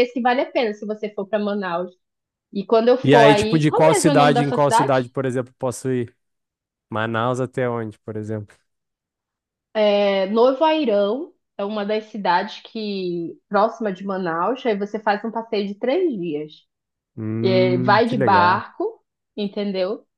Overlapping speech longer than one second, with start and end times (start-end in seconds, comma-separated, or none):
3.0-5.0, 17.4-18.6